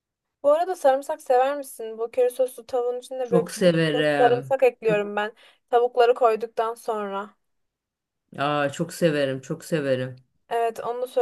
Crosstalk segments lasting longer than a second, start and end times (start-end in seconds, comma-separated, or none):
3.2-5.0